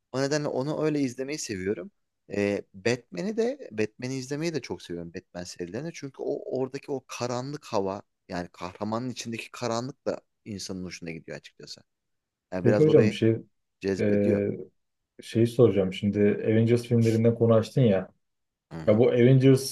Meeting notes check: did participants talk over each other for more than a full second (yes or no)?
no